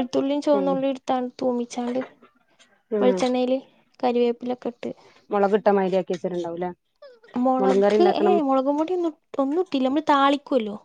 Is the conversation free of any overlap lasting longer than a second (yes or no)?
yes